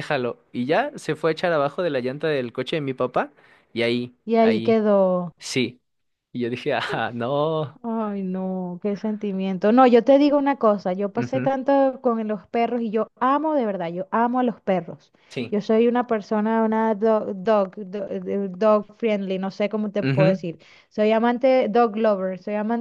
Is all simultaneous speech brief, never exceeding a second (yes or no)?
yes